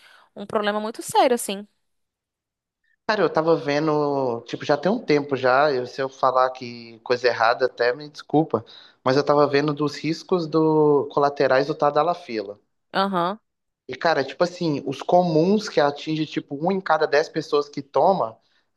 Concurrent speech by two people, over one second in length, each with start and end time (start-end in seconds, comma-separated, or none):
none